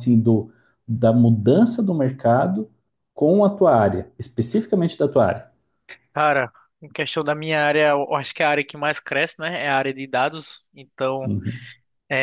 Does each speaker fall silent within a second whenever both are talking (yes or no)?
yes